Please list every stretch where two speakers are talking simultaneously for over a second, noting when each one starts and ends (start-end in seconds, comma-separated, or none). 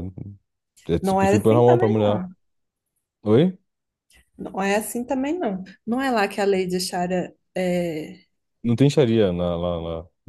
1.0-2.2